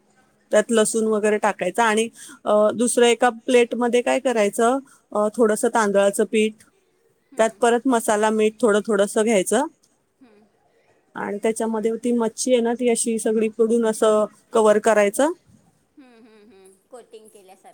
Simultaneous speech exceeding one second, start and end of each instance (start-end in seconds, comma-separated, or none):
none